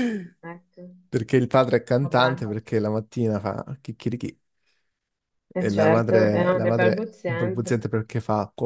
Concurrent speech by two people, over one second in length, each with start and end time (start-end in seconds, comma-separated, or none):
5.6-7.9